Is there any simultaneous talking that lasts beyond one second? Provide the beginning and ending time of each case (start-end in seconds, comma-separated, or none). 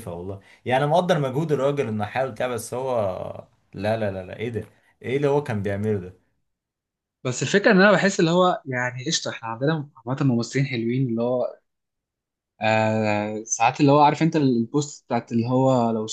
none